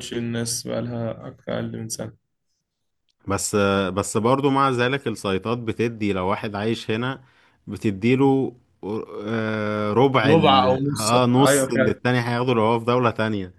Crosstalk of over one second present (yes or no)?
yes